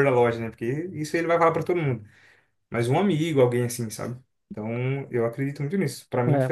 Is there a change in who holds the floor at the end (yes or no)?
yes